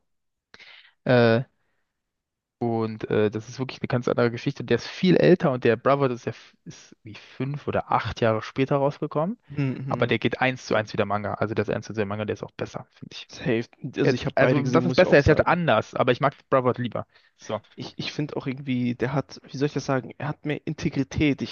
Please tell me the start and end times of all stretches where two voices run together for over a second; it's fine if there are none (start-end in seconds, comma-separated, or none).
14.0-15.6